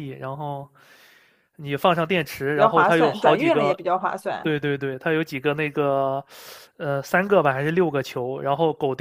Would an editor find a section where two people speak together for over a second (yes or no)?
yes